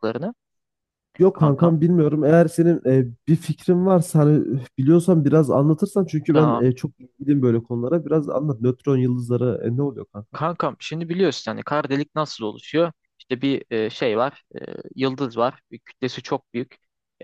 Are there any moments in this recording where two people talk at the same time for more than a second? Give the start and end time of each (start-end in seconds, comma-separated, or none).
none